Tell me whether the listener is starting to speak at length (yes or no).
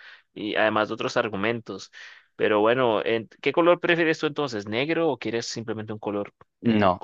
yes